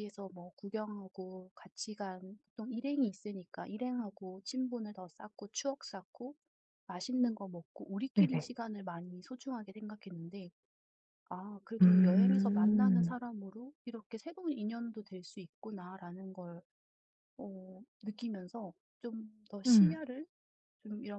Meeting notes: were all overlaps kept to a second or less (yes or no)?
no